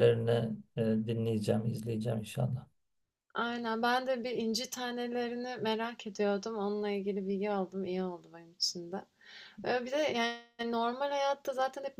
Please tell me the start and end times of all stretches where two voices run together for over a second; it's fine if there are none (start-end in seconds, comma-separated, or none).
none